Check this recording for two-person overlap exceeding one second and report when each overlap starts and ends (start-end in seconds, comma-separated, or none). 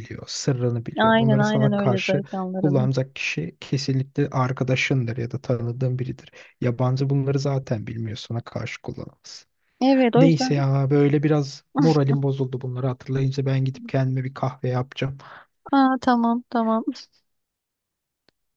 1.0-2.9